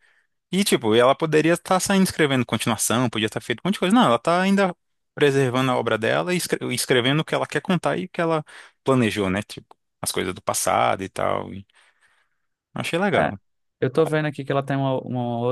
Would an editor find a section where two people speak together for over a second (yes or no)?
no